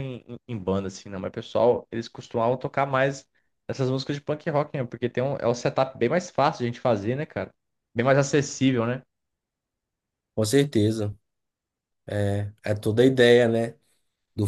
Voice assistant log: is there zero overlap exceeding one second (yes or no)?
yes